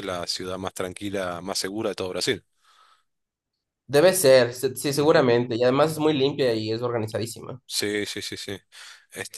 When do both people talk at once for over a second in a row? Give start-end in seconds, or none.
none